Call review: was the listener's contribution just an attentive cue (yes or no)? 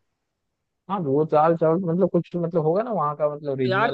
no